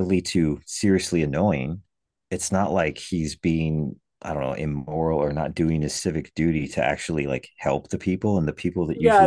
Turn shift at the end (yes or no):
yes